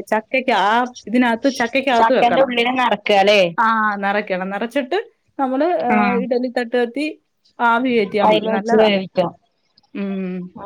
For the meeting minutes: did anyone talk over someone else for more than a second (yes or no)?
no